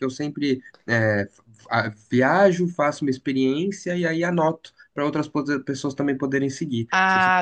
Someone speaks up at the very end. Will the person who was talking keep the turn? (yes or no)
no